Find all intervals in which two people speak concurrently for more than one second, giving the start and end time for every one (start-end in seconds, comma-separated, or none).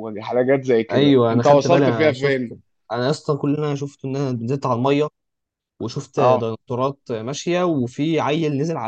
0.9-2.4